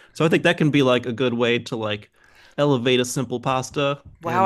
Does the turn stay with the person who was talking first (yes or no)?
no